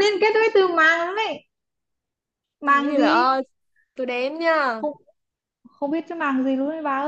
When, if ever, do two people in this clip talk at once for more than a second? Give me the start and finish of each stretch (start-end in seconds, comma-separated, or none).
none